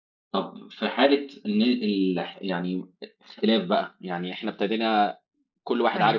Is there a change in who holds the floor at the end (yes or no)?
no